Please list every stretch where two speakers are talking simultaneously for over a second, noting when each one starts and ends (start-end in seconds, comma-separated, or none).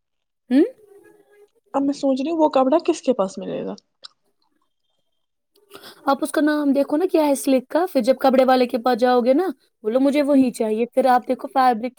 none